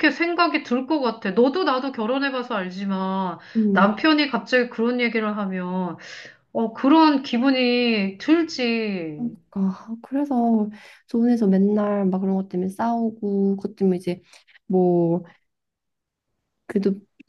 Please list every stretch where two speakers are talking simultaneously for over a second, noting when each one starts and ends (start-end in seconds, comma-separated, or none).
none